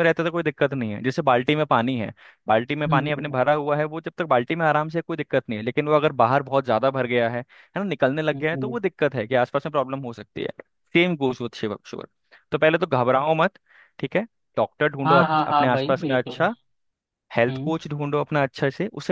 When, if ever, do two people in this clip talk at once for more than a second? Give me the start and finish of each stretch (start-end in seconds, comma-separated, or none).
15.1-16.4